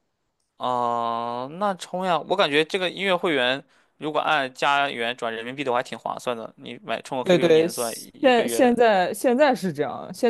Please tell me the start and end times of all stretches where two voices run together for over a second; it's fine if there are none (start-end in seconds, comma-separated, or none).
7.2-8.8